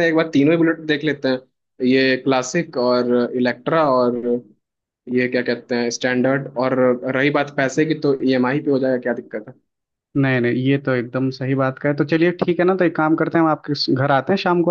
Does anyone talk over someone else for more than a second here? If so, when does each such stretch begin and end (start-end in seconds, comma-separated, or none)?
none